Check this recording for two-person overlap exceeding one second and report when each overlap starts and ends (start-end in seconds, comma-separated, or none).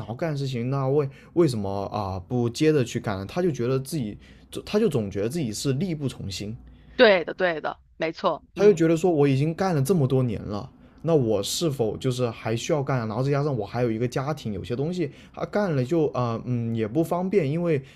none